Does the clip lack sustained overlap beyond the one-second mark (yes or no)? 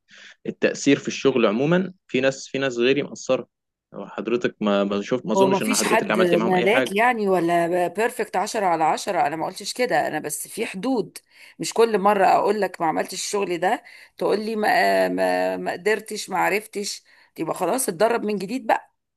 no